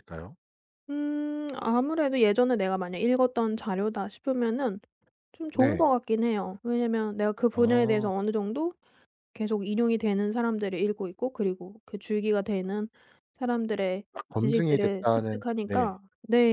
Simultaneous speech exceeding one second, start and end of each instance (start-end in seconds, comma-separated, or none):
14.1-15.9